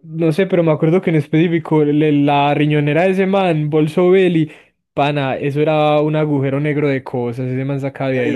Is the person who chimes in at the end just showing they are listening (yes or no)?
no